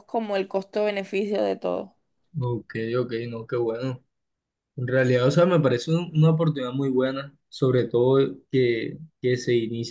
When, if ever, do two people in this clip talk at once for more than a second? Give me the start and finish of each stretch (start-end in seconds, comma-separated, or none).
none